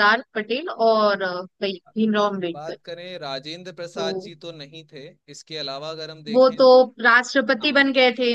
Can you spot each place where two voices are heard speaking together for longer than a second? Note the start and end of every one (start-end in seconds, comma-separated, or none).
none